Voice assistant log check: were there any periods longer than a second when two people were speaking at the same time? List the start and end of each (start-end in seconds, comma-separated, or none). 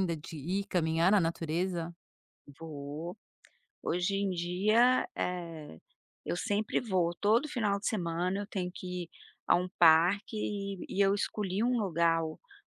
none